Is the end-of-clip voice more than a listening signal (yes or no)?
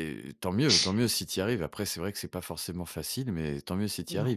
no